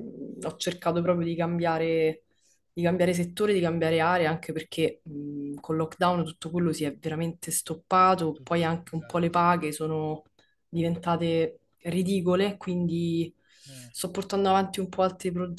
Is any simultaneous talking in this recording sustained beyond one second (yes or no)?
yes